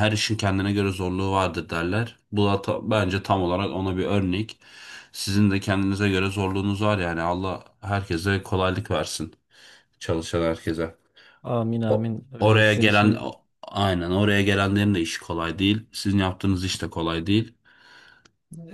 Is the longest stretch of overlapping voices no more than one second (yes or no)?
no